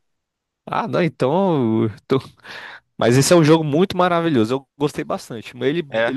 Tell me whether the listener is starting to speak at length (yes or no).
no